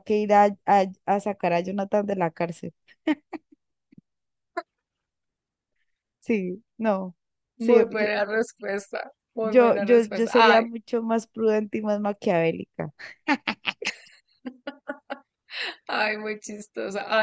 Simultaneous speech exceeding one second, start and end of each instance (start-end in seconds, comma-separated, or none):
9.4-10.7